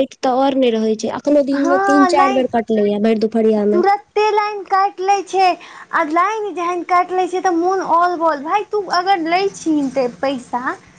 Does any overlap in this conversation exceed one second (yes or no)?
no